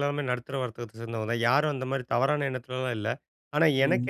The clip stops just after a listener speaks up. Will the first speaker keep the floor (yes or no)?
yes